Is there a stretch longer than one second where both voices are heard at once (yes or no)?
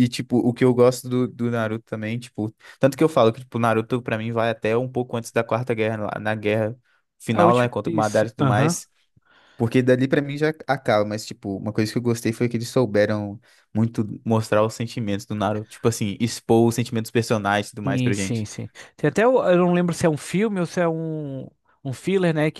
yes